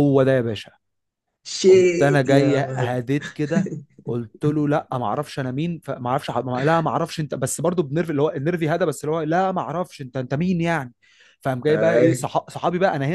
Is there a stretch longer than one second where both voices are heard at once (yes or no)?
yes